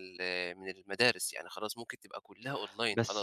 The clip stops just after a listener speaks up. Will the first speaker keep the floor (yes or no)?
no